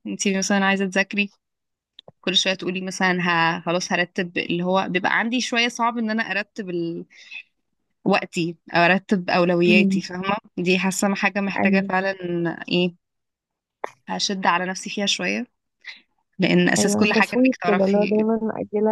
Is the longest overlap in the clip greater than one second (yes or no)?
yes